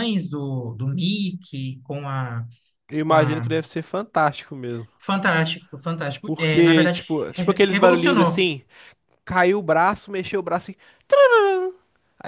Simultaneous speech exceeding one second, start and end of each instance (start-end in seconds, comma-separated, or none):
6.2-8.5